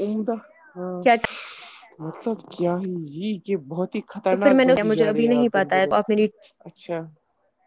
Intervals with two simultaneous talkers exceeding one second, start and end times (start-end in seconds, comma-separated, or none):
4.3-6.0